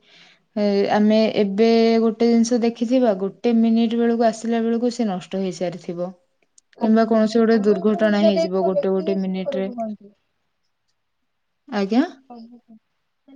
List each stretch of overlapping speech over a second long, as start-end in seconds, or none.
7.5-9.7